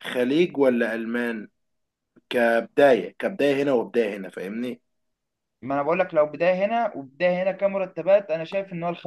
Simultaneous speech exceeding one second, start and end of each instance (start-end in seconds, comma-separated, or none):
none